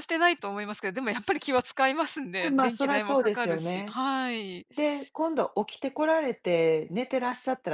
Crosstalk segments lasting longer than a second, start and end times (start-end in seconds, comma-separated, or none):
2.4-4.0